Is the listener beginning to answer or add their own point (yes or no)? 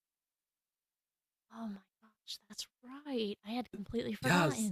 yes